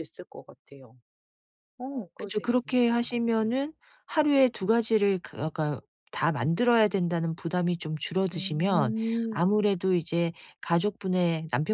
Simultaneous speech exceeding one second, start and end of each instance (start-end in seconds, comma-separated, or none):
2.2-3.6, 8.3-9.7